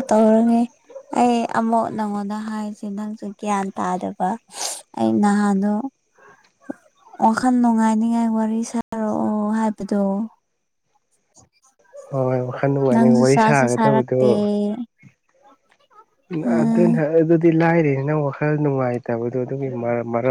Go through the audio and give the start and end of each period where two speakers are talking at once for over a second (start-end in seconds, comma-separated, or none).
12.9-14.2